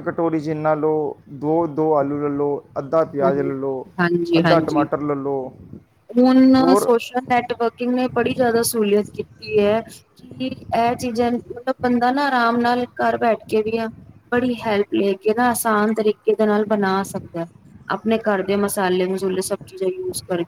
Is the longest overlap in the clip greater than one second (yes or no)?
no